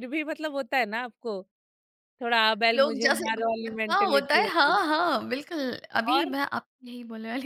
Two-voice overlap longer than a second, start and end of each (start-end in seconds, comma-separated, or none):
2.7-4.8